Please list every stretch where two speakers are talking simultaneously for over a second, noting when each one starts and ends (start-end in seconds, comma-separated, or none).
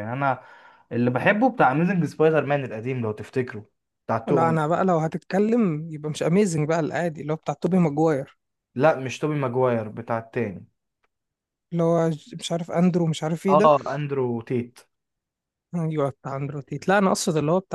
none